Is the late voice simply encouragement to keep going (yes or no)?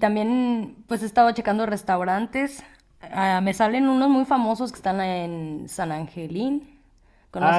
no